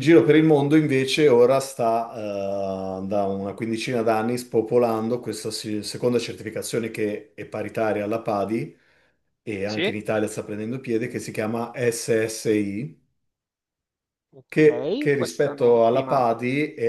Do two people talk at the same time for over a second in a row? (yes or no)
yes